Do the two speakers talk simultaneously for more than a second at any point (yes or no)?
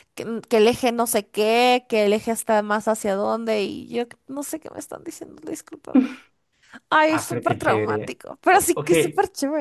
yes